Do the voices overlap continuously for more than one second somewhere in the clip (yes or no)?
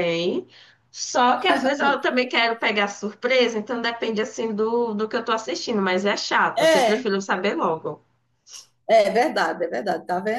no